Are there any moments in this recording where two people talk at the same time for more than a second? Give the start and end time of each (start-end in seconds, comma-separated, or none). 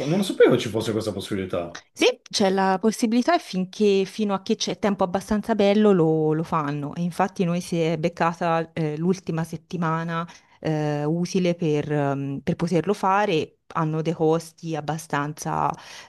none